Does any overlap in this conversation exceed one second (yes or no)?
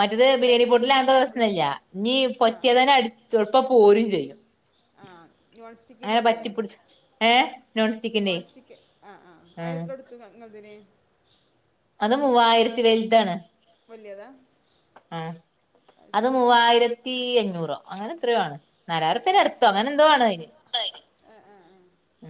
no